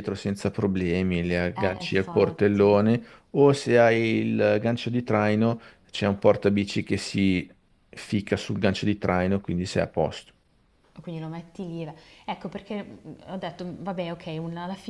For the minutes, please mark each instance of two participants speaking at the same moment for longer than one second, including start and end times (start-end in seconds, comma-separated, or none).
1.6-2.8